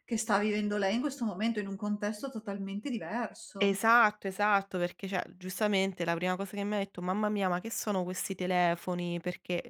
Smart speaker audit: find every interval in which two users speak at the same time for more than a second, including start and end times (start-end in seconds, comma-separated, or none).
none